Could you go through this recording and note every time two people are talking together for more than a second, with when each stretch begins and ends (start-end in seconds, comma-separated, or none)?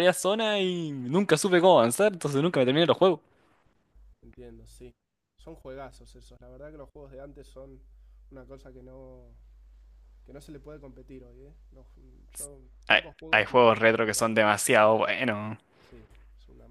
12.9-14.3